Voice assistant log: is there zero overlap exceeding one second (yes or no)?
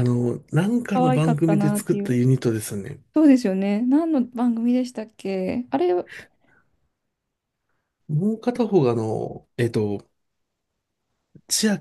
no